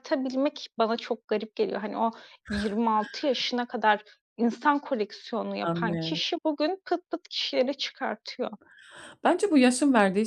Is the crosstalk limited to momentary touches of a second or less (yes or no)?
yes